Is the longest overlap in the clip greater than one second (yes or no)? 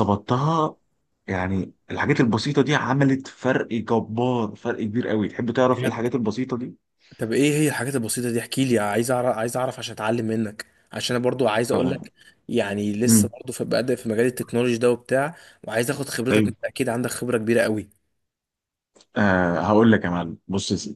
no